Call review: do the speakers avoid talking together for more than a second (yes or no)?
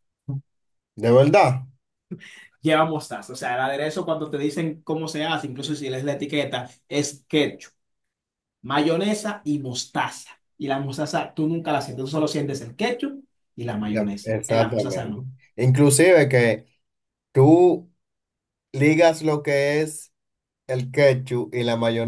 no